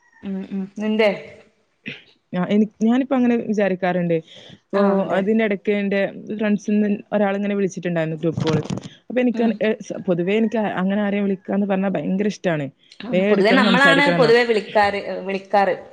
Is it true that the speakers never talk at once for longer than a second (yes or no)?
yes